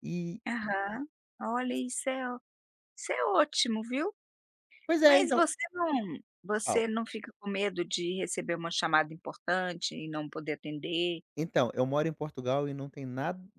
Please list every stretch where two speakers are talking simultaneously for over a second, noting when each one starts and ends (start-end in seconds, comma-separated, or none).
none